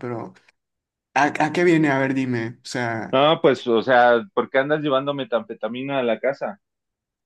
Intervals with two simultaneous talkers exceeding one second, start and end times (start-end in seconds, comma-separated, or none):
none